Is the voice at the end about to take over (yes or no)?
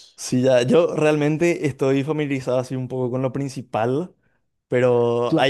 no